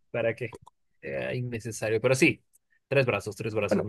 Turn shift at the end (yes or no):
no